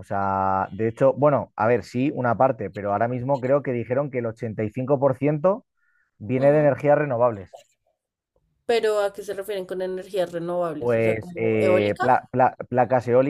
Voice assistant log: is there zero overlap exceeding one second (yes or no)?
no